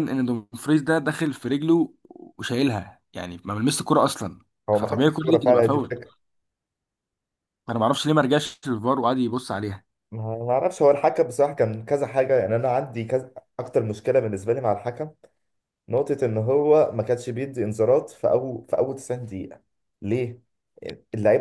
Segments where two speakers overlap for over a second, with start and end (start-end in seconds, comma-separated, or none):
4.7-5.9